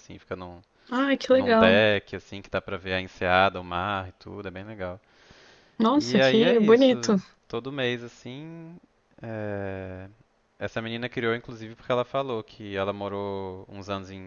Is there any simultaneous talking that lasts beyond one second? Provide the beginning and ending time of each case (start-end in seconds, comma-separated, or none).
5.9-7.2